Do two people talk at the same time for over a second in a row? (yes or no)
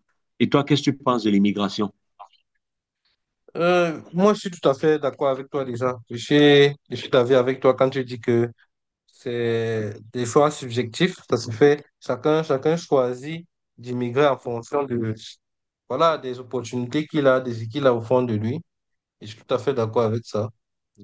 no